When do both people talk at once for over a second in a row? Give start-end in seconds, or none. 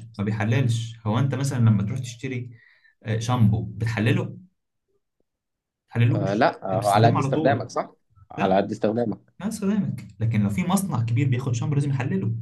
6.1-7.7